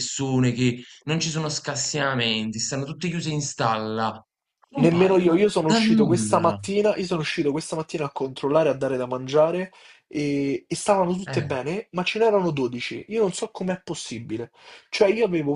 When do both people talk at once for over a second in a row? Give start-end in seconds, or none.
4.8-6.6